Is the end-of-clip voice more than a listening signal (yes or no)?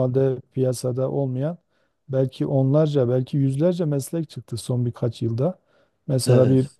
no